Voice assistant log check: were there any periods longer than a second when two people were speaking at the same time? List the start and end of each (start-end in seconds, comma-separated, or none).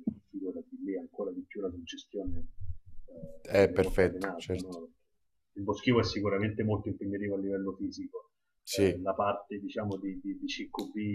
3.4-4.8